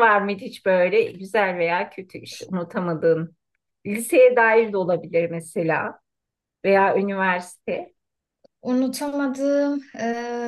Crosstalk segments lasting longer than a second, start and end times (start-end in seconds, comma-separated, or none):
none